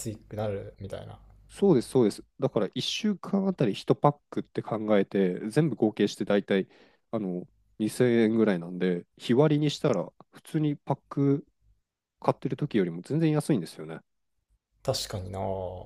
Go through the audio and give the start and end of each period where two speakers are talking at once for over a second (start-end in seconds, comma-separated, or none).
none